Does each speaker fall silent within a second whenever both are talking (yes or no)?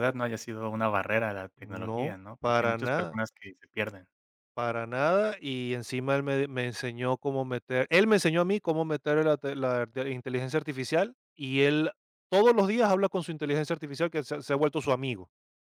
no